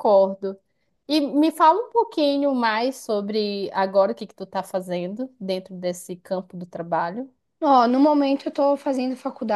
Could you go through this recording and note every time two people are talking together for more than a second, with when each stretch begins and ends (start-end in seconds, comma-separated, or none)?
none